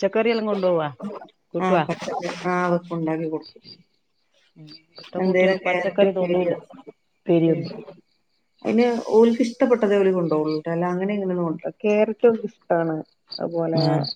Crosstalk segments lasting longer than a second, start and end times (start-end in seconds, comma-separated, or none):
5.2-6.5